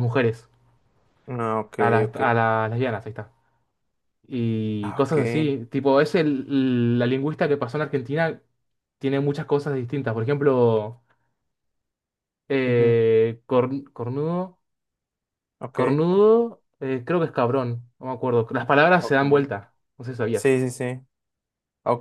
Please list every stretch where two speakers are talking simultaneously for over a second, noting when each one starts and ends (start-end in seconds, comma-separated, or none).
none